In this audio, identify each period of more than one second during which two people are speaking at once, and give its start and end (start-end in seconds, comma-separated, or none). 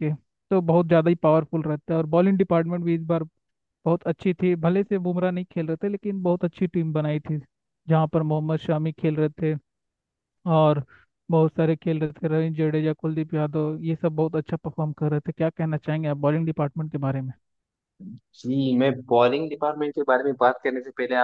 none